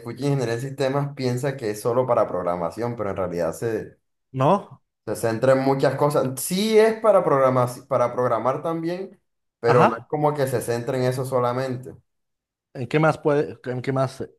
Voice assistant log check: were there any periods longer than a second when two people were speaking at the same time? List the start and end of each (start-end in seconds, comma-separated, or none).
none